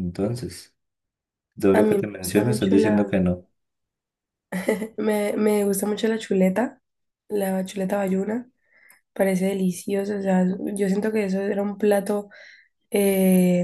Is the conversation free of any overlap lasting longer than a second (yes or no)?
no